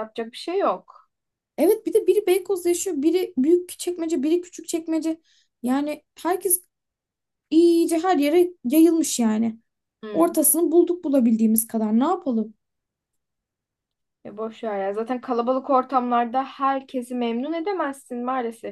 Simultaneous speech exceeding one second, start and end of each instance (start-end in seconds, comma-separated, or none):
none